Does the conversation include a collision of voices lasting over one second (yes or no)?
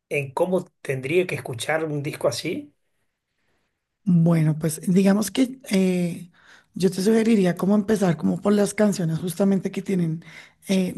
no